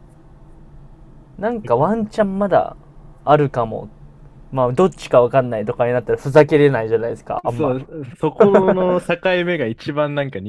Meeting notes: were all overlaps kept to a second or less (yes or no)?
yes